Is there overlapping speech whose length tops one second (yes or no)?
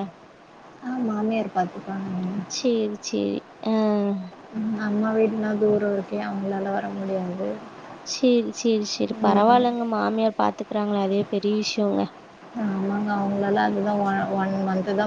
no